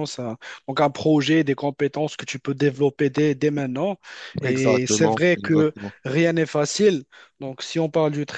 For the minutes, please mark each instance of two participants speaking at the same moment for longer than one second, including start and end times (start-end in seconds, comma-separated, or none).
4.4-6.0